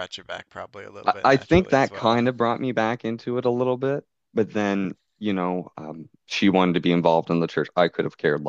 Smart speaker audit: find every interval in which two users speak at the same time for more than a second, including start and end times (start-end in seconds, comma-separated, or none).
1.1-2.3